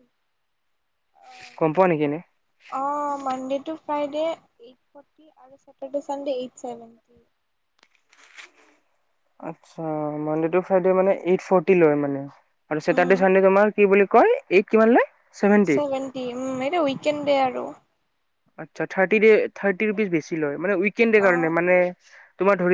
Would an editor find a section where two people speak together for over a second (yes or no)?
no